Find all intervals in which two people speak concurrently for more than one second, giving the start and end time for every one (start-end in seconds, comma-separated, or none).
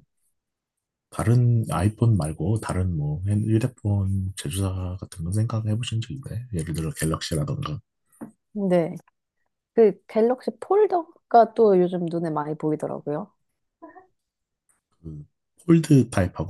none